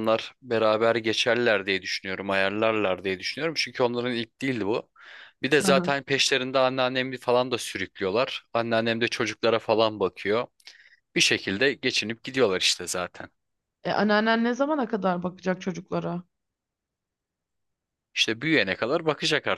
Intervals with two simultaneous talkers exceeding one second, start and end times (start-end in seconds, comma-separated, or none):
none